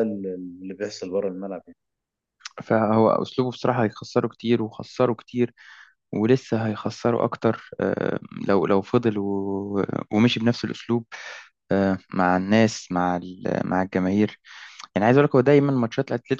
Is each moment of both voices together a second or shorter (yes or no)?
yes